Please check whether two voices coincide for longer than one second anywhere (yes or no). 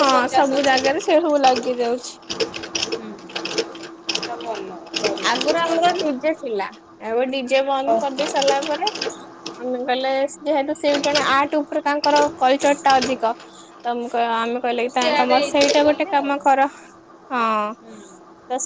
yes